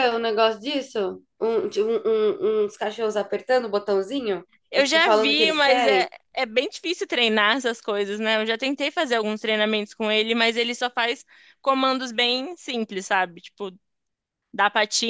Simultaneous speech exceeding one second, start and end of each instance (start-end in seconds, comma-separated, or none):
4.7-6.1